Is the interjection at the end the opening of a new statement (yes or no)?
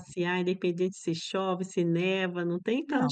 yes